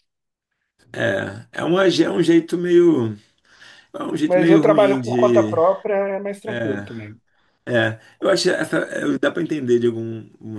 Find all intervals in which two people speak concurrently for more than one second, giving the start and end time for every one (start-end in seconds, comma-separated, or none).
4.2-5.5